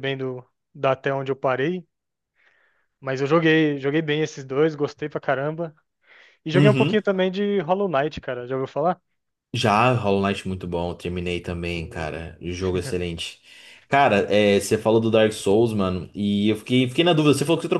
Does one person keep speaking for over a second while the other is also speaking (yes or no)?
no